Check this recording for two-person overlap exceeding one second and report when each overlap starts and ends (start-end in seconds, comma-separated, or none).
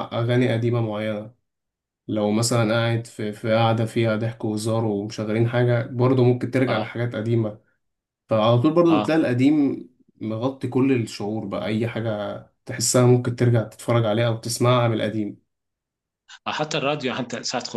none